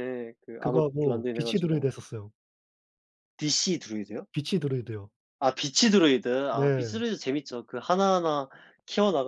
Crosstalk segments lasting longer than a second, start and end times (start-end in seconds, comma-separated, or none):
0.6-1.9